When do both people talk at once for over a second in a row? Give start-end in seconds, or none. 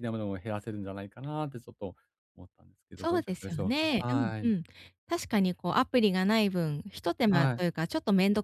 2.9-4.5